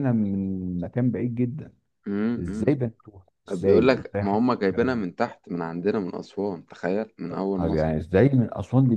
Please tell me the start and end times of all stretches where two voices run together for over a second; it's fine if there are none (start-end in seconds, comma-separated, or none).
3.5-5.0